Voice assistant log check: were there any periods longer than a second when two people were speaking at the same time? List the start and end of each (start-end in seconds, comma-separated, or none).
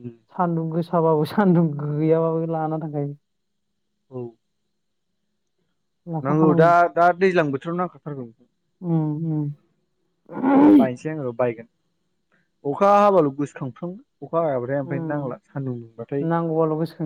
none